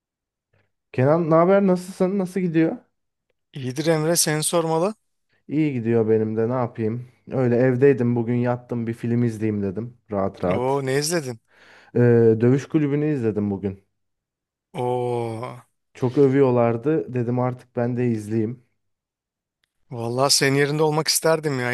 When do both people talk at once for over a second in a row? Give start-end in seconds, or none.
none